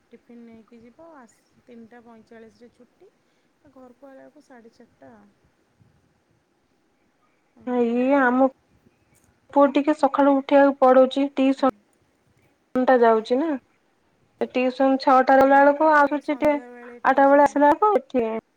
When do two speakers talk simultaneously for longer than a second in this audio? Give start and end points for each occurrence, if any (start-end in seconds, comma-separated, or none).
15.3-17.6